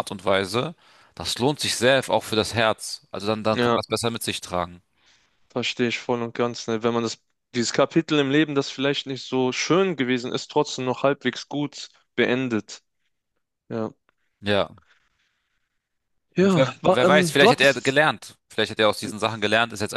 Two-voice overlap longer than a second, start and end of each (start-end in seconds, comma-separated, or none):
16.4-18.0